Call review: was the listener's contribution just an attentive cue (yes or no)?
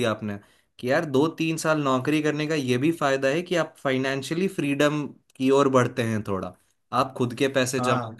yes